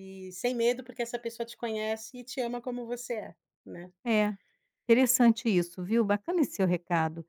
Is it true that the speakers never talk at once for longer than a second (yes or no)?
yes